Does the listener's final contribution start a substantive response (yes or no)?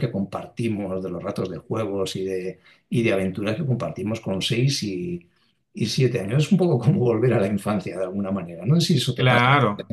yes